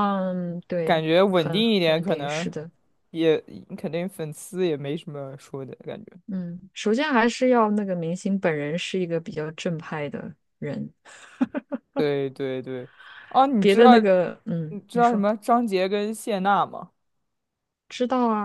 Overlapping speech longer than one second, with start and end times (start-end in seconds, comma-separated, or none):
0.8-2.5